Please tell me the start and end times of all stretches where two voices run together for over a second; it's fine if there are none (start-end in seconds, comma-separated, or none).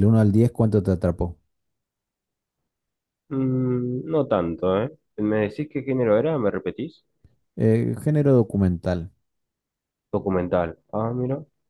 none